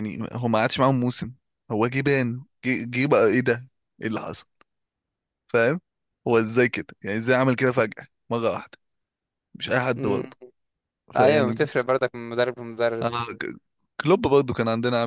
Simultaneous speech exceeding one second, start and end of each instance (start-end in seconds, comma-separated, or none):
none